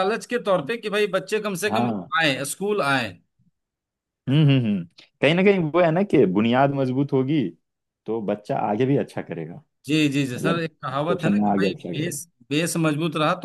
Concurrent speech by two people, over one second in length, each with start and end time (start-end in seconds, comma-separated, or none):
10.3-12.2